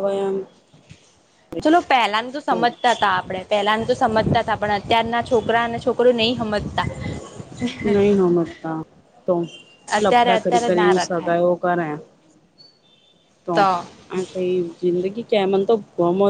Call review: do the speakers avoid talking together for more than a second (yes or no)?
no